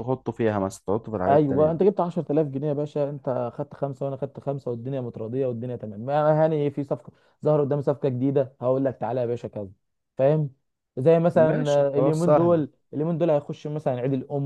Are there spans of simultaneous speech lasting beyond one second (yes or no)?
yes